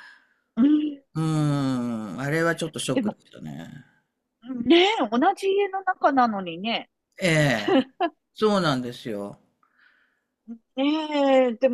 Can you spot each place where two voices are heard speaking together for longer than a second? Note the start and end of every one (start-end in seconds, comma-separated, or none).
none